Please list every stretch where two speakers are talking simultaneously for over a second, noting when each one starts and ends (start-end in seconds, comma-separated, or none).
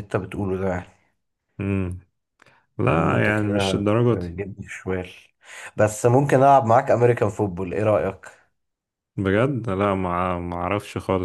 2.8-4.3